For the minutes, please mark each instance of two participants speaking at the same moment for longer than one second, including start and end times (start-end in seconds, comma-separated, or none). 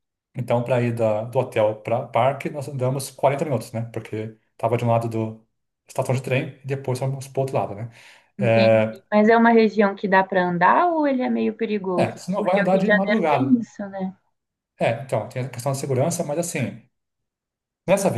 11.9-13.7